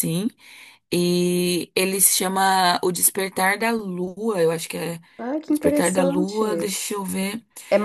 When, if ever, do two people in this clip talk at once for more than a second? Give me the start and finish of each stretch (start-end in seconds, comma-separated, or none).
5.5-6.7